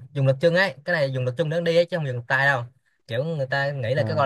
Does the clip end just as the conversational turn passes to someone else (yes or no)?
no